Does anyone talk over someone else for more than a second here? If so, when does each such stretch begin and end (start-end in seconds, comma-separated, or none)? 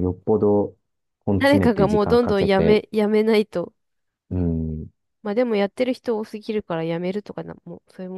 1.3-2.8